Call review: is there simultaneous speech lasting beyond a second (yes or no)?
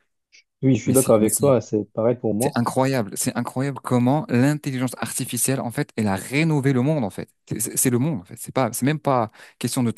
no